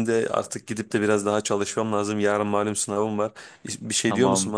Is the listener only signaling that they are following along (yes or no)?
no